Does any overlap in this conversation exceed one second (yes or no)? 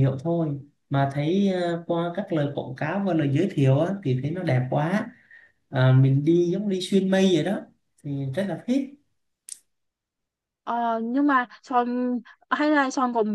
no